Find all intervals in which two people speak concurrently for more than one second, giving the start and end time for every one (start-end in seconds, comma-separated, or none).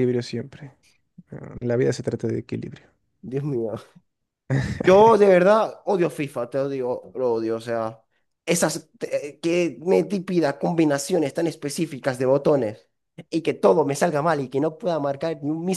none